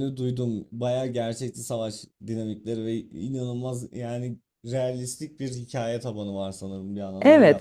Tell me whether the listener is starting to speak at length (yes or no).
yes